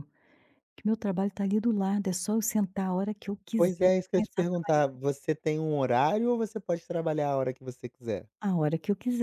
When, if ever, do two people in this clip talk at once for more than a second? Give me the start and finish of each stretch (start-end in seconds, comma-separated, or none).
3.6-4.8